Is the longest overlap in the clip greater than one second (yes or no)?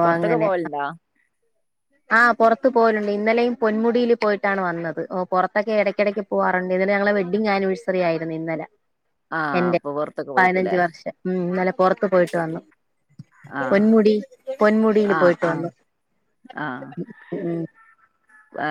no